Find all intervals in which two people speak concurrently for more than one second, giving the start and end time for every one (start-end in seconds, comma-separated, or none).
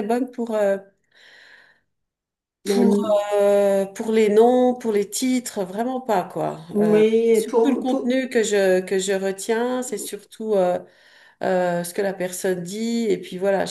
6.7-8.2